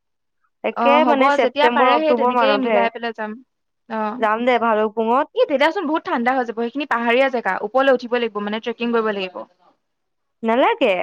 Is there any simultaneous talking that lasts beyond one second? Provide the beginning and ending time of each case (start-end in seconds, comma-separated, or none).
0.8-2.8